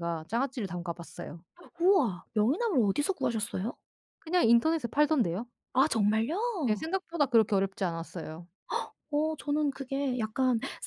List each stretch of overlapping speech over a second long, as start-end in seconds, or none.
none